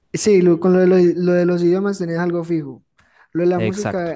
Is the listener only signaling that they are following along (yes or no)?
yes